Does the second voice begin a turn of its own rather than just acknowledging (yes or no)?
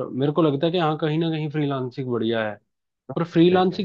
no